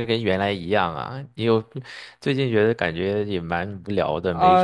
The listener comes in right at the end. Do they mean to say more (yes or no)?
yes